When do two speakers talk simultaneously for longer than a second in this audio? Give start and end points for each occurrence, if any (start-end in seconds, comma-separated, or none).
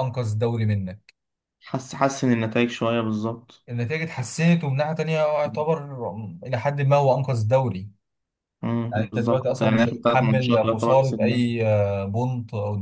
8.9-11.5